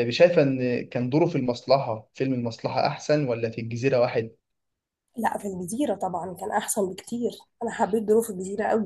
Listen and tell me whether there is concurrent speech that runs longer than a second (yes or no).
no